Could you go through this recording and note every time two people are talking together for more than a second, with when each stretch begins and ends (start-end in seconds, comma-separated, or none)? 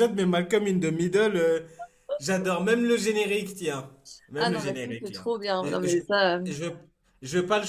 4.4-6.0